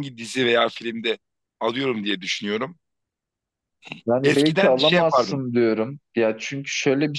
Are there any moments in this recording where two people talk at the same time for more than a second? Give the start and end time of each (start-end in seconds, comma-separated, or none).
4.2-5.5